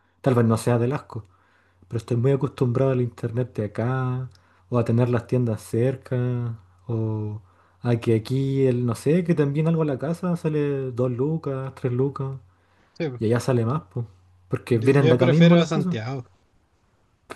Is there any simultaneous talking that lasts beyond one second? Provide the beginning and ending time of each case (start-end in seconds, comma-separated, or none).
14.7-16.0